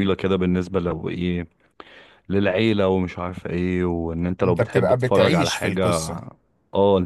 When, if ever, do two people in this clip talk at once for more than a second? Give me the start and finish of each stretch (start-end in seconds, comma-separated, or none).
4.4-5.8